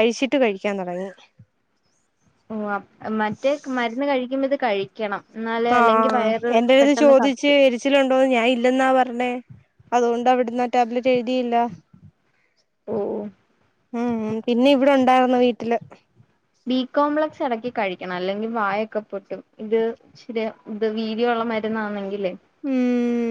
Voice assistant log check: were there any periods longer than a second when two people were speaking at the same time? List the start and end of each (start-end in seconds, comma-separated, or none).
none